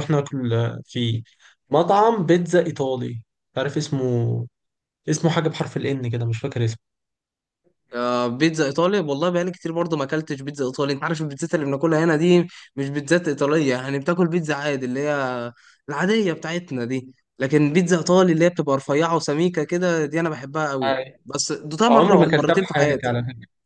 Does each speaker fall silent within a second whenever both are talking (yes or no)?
no